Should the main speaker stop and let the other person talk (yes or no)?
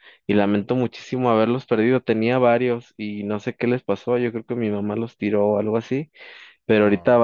no